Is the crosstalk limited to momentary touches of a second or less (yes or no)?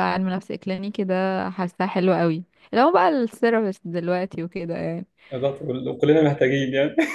yes